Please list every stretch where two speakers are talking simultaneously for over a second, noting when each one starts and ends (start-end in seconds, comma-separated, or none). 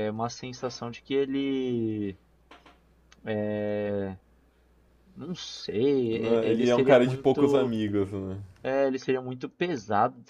6.1-7.7